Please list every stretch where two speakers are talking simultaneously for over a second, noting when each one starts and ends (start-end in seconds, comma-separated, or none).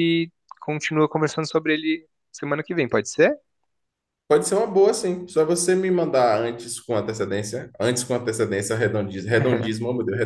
none